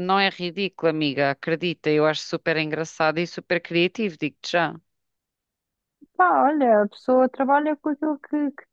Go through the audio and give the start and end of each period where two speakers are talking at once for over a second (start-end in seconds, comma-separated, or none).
none